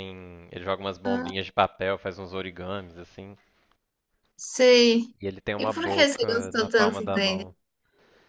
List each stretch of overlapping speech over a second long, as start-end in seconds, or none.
5.6-7.5